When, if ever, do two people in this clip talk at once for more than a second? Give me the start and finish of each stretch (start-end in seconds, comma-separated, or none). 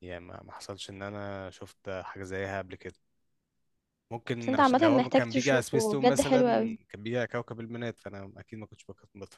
4.4-6.4